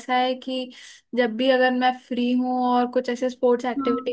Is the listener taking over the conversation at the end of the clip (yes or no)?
no